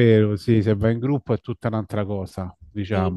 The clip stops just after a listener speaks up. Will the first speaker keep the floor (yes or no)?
no